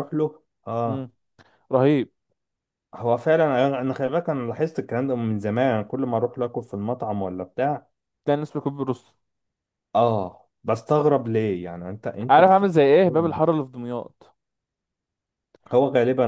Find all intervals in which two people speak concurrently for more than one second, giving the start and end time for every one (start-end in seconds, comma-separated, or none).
none